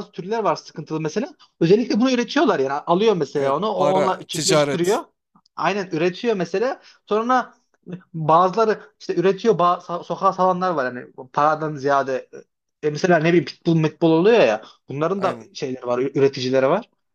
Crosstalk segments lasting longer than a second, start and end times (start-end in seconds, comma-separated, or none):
3.4-5.0